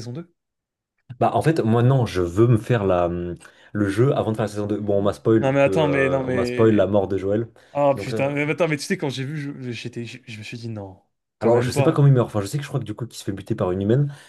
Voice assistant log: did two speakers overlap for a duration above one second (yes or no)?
yes